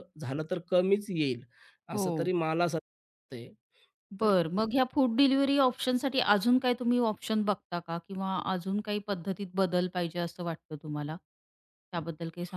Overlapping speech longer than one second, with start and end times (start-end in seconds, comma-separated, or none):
none